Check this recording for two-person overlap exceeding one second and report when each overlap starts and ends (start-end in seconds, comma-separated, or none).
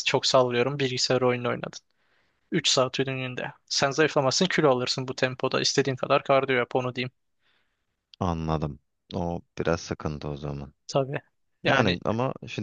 none